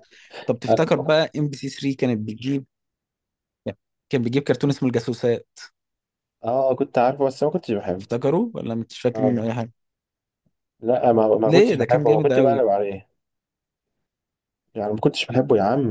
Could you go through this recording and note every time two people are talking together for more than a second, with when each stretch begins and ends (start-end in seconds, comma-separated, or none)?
11.4-12.6